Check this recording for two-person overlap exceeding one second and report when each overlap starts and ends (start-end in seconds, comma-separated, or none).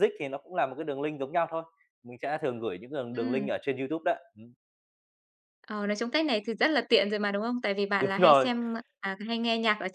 none